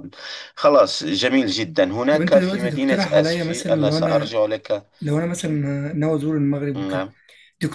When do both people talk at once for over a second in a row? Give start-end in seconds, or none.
2.1-4.4